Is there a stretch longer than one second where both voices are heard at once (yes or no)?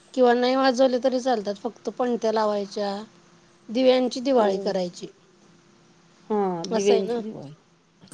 no